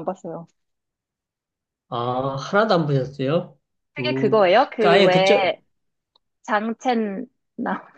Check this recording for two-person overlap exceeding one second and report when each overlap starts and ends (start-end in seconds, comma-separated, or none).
4.0-5.6